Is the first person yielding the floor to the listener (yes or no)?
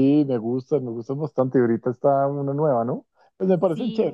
no